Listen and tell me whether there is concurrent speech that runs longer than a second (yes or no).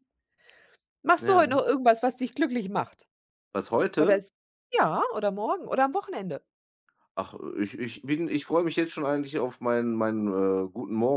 no